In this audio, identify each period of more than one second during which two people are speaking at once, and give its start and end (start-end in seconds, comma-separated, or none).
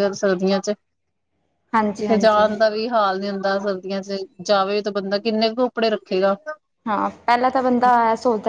none